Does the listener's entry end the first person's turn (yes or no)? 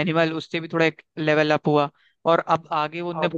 no